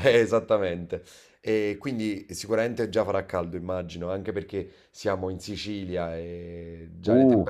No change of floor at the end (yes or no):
no